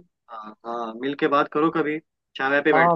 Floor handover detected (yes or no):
yes